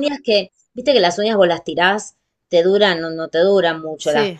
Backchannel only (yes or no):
yes